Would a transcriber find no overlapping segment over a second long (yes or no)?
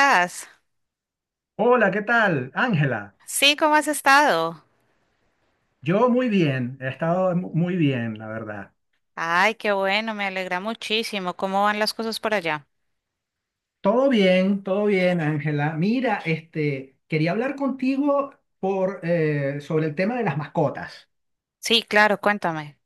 yes